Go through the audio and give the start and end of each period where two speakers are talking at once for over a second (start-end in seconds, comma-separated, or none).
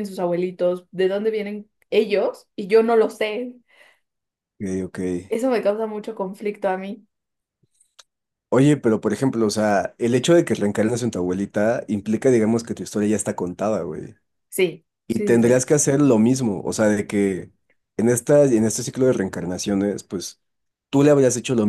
none